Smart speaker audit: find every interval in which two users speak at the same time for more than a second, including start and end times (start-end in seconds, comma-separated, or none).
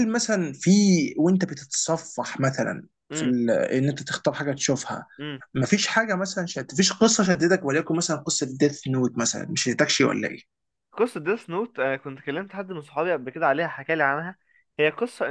none